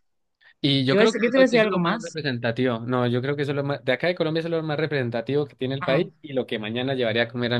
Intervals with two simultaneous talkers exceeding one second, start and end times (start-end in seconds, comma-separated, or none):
0.9-2.2